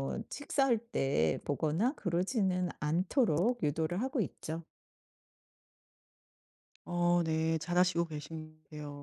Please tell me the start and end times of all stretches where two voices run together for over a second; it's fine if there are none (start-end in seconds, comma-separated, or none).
none